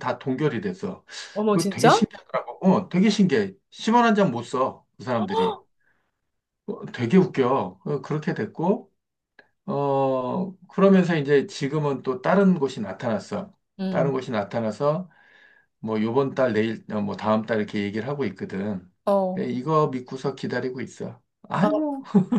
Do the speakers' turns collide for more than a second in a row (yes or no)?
no